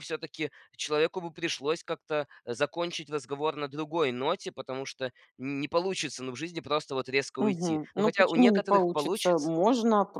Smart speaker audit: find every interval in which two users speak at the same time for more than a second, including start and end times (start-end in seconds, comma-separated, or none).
7.4-9.5